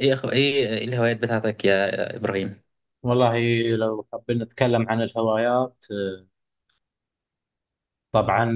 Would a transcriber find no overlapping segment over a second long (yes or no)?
yes